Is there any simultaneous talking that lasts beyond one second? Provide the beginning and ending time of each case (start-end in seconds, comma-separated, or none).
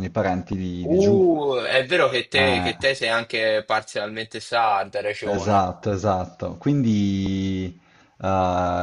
none